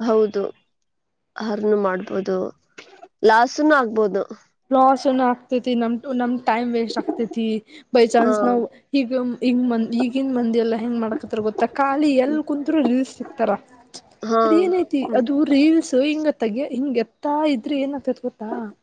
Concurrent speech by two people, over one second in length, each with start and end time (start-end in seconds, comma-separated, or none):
none